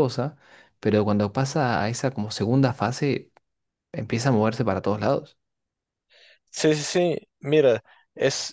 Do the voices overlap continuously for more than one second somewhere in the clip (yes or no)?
no